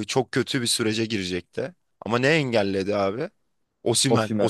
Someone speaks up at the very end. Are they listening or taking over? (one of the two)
listening